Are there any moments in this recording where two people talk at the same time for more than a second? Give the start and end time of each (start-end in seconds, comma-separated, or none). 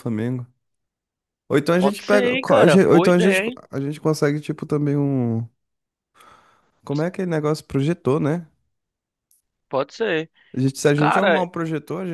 1.8-3.6